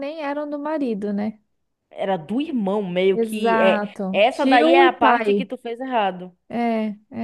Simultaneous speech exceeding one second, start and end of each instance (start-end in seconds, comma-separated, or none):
3.1-5.5